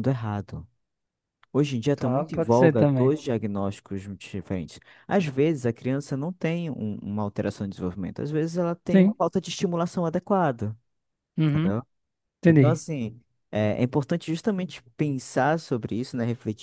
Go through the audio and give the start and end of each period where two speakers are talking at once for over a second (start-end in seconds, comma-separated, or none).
1.9-3.1